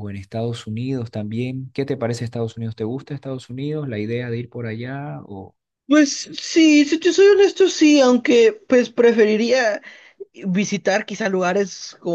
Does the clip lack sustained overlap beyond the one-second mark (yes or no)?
yes